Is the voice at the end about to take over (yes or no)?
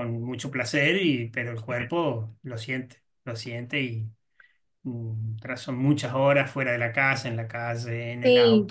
yes